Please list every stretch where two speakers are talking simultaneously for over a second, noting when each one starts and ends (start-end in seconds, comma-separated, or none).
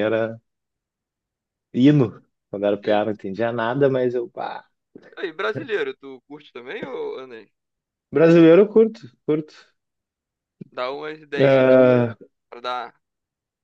none